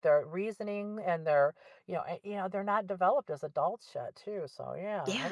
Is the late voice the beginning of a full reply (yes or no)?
yes